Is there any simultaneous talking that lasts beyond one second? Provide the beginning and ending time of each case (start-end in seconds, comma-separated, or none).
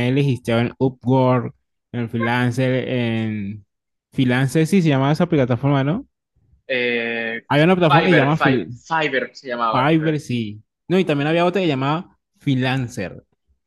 none